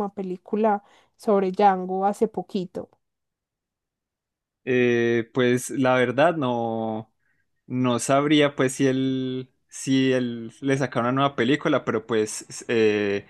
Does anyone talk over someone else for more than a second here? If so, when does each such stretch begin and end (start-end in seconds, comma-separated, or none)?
none